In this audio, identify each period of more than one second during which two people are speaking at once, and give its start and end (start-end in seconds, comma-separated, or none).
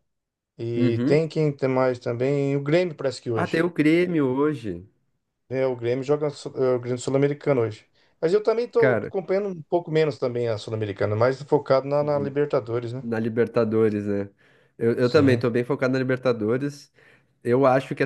none